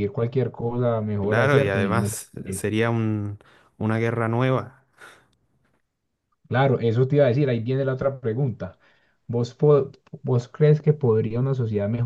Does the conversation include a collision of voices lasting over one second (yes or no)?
yes